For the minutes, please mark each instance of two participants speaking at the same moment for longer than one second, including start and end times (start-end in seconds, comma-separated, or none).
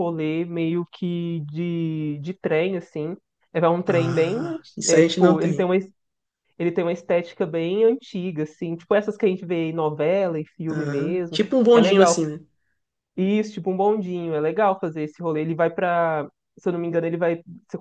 3.9-5.7, 10.7-12.2